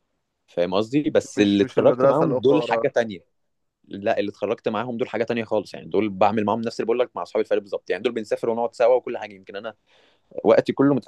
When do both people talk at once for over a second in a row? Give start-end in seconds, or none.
1.4-2.9